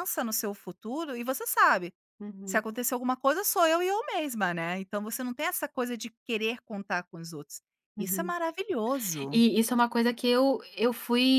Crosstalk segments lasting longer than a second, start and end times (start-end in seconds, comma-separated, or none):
none